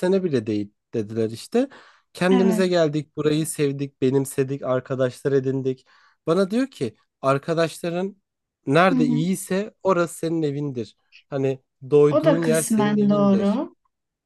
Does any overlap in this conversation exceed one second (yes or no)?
yes